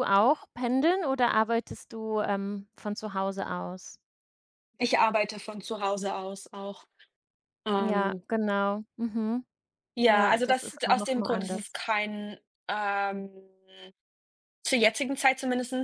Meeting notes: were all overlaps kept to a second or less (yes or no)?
no